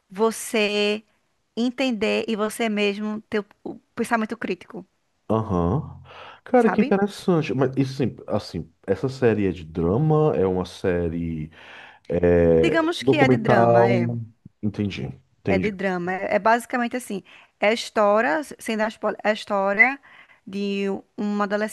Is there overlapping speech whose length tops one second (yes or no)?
yes